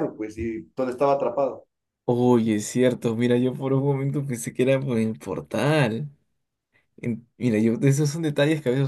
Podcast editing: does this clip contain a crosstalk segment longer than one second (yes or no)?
no